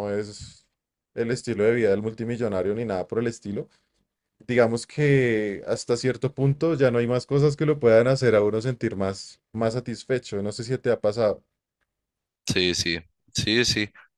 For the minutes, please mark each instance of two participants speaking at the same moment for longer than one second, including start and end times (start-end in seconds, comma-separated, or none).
none